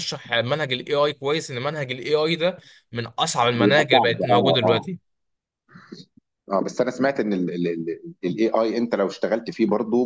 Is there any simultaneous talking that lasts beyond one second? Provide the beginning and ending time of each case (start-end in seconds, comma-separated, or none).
3.6-4.9